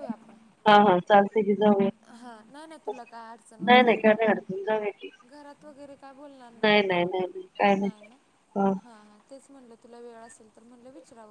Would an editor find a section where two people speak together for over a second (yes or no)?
yes